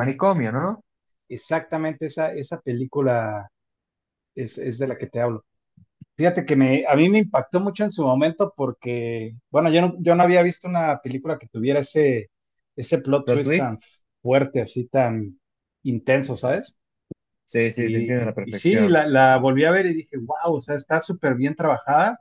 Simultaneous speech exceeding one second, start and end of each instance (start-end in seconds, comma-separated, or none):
17.7-19.0